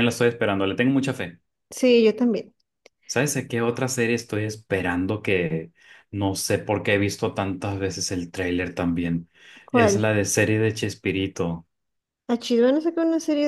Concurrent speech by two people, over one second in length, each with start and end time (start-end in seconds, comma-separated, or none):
none